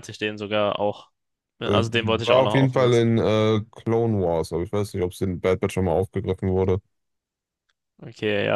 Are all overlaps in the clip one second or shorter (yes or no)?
no